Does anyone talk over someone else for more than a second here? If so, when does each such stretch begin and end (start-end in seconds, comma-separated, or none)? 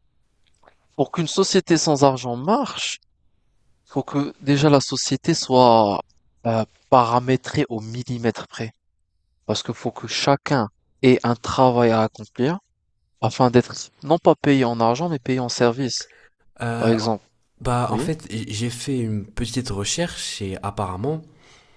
none